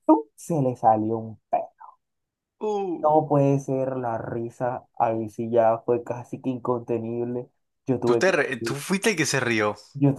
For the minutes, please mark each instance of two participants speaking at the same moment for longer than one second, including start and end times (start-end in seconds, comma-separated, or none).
none